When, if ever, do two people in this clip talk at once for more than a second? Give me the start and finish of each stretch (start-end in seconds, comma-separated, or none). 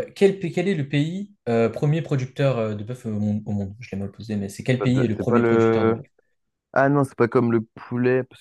4.8-6.0